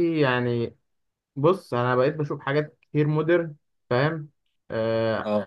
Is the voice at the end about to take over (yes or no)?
no